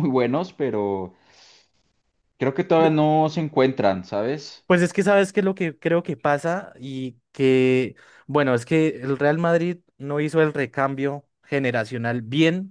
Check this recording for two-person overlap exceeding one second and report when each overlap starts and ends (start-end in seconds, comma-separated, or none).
none